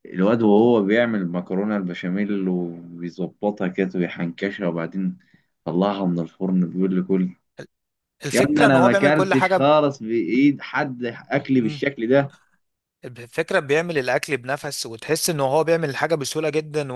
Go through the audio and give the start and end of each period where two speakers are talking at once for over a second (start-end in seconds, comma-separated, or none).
8.3-9.7